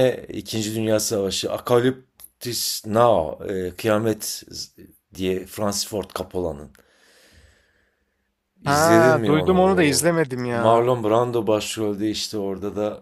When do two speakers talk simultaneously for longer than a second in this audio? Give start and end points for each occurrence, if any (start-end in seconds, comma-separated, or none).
8.6-10.9